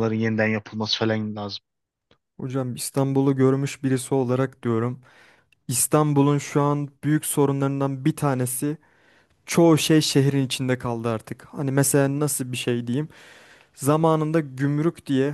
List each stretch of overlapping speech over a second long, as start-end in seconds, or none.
none